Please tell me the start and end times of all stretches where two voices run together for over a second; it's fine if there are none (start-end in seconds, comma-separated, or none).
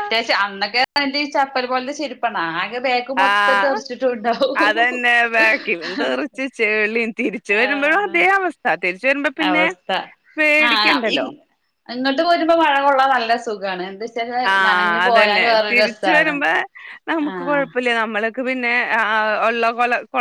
14.5-16.3